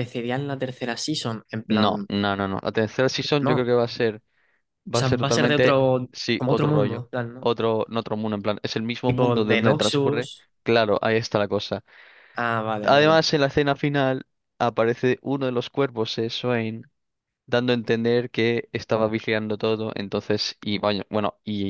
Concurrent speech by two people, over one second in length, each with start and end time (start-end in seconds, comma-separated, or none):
5.0-7.5, 9.1-10.5